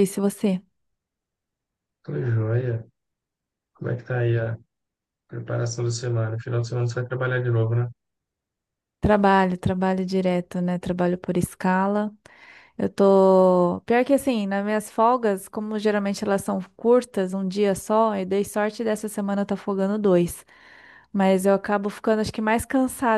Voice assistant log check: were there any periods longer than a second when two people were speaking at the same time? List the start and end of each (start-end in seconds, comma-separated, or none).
none